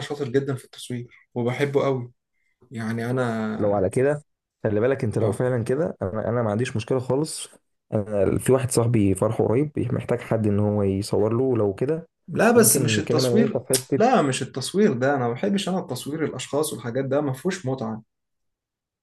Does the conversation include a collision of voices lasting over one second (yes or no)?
yes